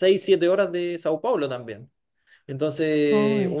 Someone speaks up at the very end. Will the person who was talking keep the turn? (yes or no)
yes